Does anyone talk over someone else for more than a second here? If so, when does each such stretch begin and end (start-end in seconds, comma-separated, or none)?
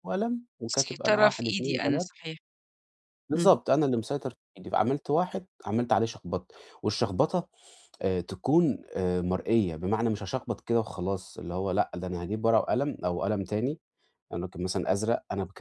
0.7-2.1